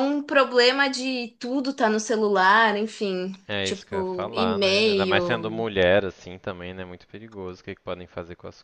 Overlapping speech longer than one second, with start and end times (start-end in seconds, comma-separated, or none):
3.5-5.7